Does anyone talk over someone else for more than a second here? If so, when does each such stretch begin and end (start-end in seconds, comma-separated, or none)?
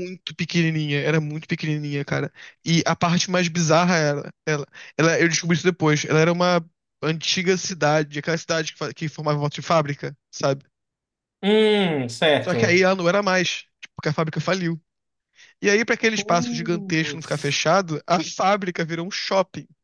16.1-17.6